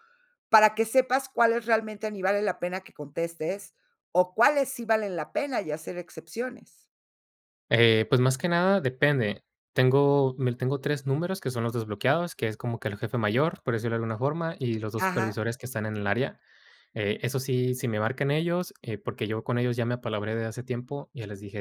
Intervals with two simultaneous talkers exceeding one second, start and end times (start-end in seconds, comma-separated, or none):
none